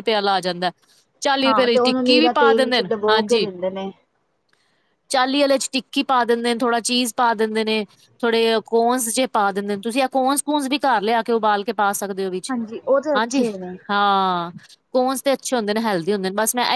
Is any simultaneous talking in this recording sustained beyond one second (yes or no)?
yes